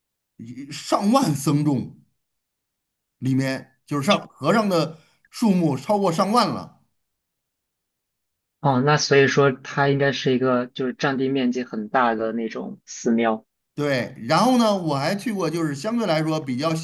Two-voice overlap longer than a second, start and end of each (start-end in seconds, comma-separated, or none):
none